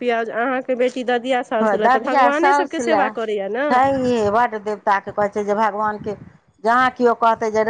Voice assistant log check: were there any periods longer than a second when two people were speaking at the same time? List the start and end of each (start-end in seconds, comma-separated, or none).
none